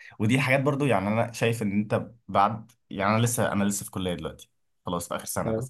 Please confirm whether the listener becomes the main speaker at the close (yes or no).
no